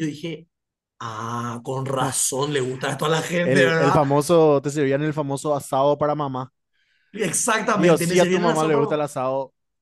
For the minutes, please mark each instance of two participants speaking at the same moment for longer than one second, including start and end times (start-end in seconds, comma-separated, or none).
7.7-9.1